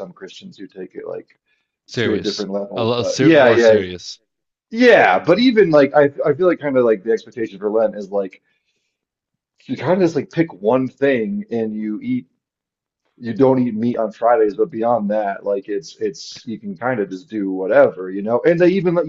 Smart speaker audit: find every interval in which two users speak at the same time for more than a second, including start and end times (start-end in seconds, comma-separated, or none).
2.0-3.8